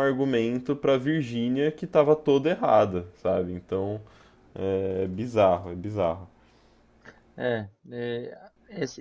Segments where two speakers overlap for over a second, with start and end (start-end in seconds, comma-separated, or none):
none